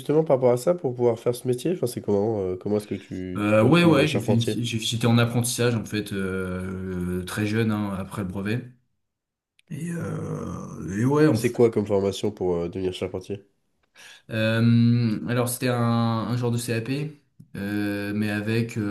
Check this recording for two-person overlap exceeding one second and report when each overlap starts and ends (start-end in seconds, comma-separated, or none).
3.4-4.7